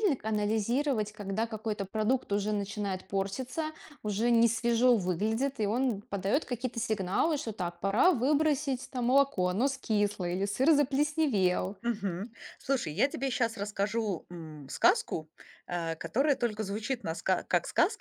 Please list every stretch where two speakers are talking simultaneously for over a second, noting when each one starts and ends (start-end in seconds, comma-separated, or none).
none